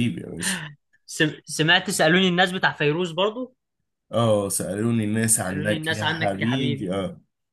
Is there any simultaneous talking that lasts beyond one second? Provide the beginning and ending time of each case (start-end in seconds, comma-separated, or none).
5.4-6.9